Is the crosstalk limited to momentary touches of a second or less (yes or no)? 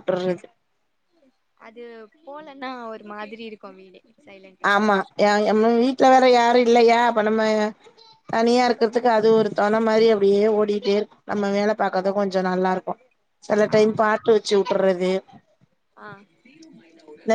yes